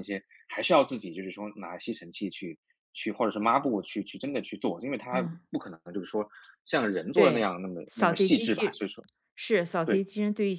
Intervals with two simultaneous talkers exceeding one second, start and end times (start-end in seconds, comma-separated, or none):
7.1-8.9